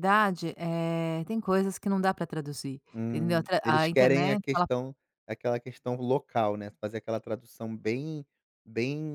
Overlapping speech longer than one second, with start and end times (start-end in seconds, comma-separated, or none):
2.9-4.7